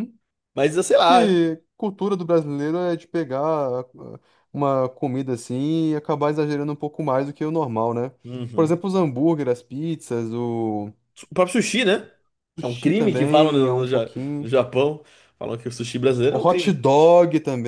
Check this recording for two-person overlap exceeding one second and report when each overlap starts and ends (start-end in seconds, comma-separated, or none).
12.6-14.5